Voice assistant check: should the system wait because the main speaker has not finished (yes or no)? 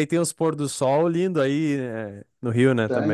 no